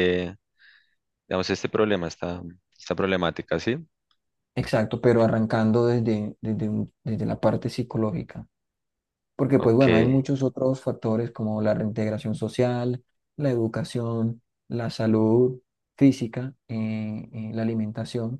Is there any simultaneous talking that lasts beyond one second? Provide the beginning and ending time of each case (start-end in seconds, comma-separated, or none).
none